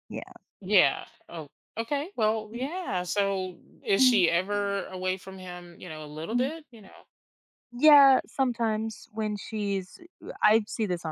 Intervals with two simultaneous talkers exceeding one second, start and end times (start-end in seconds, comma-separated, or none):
none